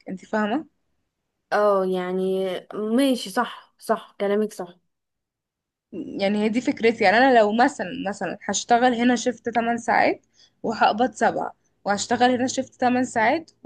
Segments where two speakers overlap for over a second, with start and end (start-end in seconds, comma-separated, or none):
none